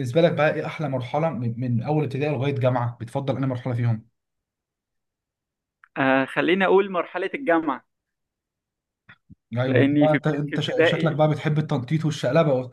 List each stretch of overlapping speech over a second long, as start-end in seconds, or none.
9.7-11.2